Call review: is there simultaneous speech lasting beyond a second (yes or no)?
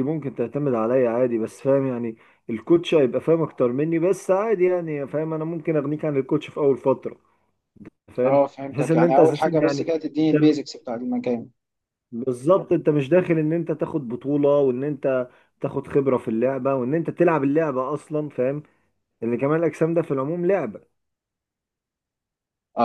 yes